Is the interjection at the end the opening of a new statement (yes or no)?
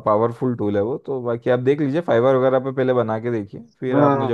yes